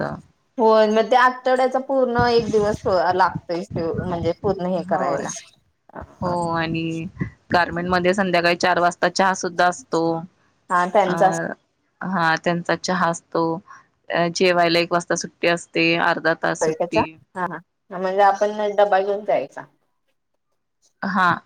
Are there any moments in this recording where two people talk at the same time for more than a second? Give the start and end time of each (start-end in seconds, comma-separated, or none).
none